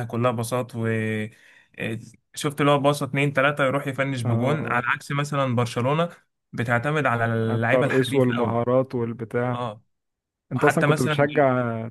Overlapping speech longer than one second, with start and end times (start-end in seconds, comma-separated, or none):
7.4-8.6